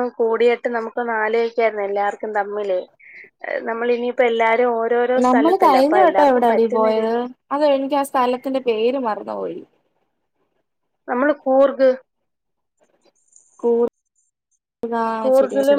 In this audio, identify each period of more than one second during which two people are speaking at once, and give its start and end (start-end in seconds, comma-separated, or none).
5.2-7.1